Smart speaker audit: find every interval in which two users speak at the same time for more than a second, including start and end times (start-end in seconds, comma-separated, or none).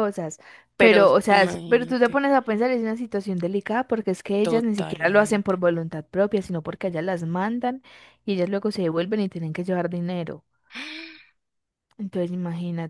0.8-2.2, 4.4-5.6